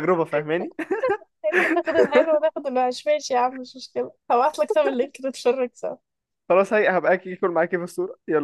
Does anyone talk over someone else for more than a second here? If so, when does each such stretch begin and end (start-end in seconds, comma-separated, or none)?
none